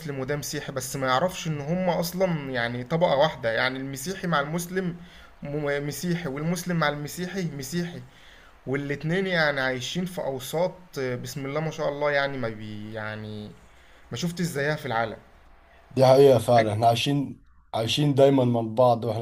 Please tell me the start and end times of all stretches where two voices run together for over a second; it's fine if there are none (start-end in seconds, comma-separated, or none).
none